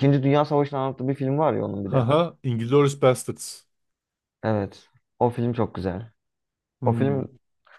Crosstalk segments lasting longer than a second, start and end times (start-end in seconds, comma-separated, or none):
none